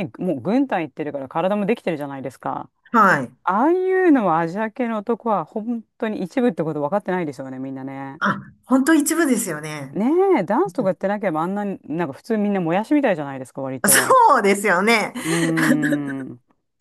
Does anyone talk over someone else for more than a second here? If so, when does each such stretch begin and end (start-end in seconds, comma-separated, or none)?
none